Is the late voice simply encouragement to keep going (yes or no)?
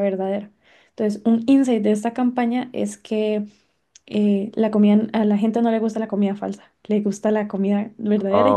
no